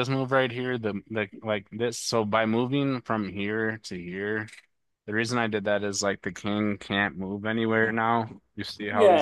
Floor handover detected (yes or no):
yes